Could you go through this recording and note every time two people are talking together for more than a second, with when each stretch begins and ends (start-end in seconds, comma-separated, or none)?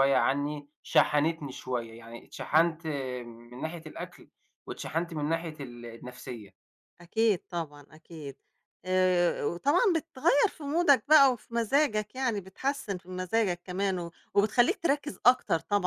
none